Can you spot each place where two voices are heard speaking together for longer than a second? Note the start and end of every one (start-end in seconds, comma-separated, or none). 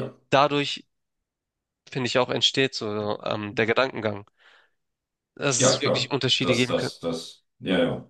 5.6-6.9